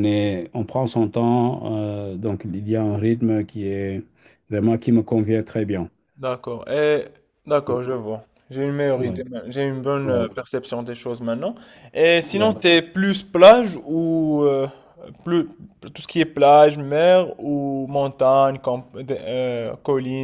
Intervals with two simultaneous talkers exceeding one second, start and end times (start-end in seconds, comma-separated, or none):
none